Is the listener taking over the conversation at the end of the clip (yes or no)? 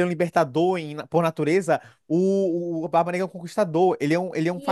yes